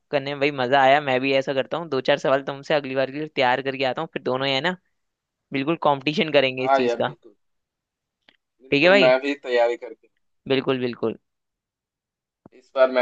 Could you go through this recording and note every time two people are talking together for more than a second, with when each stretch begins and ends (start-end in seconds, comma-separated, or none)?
none